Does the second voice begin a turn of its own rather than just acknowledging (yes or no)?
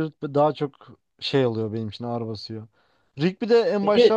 no